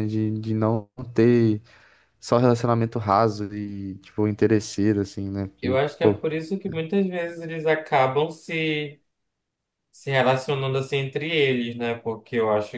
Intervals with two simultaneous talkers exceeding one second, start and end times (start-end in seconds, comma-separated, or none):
none